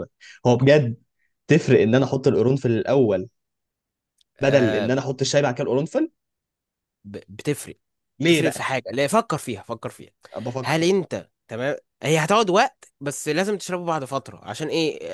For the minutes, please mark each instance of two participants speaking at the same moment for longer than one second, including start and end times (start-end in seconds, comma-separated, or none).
none